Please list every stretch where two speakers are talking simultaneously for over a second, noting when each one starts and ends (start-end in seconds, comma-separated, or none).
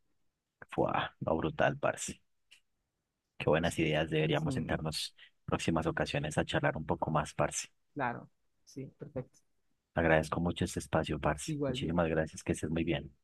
none